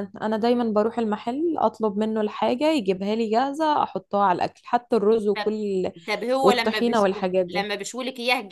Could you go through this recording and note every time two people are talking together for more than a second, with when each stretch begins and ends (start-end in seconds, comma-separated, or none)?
6.4-7.7